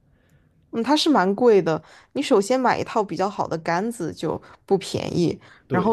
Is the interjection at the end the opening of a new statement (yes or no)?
no